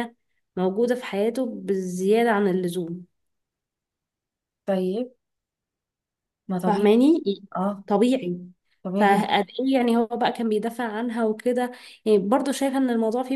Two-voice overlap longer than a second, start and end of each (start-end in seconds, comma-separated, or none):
none